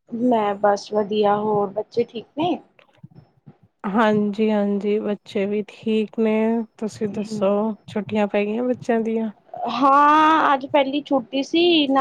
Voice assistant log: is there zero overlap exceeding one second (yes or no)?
yes